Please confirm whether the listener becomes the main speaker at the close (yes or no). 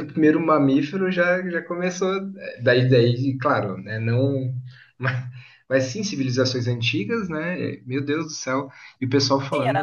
yes